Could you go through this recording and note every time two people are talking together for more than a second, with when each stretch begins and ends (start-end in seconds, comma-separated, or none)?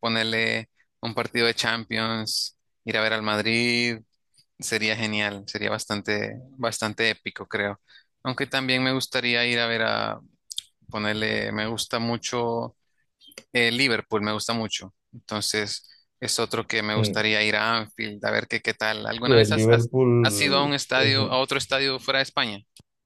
19.2-21.1